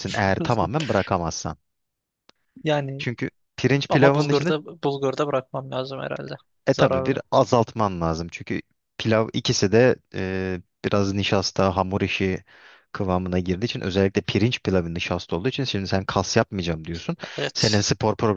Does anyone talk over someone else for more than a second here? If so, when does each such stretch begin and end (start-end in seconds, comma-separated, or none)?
none